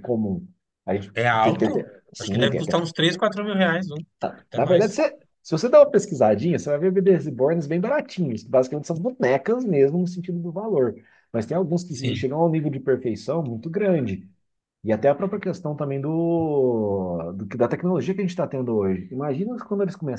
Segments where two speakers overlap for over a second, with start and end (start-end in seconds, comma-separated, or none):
1.1-2.8